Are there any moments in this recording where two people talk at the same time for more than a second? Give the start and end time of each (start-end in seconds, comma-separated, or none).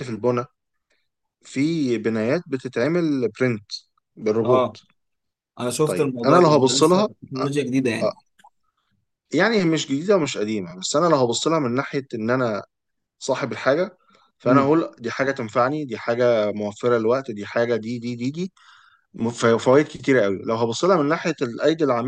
5.8-7.4